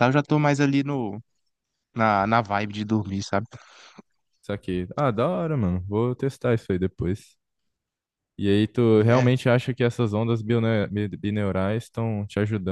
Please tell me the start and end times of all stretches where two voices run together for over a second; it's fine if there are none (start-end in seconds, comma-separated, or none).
none